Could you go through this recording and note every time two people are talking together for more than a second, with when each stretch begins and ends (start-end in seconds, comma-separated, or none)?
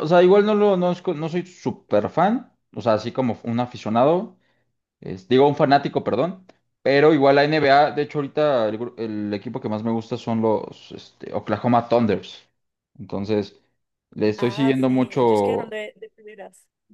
14.4-15.8